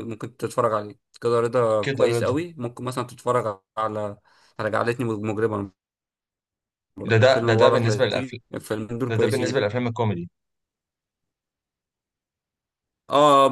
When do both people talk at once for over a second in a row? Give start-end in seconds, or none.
7.0-8.4